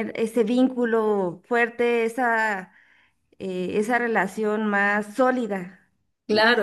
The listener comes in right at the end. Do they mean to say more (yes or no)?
yes